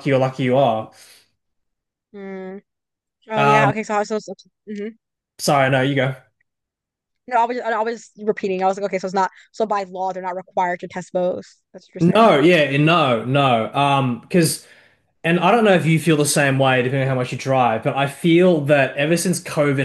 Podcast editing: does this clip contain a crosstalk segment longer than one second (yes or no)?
no